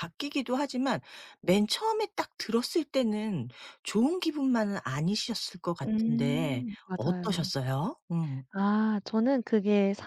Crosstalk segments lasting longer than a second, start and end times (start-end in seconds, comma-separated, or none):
5.8-7.5